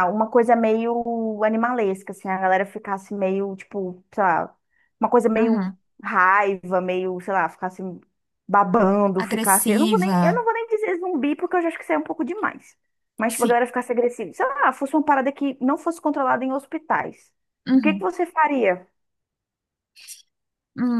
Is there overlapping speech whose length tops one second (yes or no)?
yes